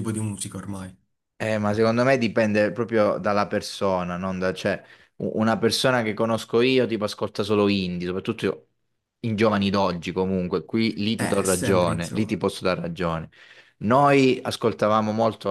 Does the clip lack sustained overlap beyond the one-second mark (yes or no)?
no